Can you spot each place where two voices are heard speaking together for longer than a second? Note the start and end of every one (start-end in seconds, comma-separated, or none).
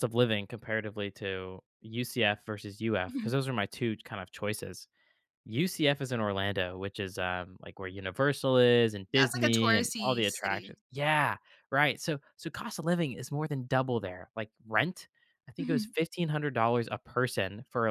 9.1-10.8